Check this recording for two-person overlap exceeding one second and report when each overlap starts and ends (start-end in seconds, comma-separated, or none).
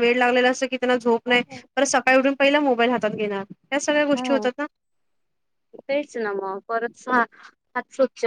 none